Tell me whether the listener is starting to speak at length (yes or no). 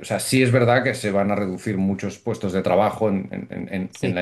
no